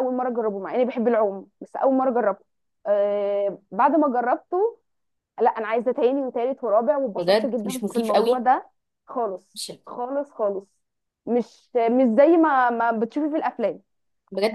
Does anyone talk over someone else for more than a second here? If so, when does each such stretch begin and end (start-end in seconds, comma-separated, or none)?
7.2-8.4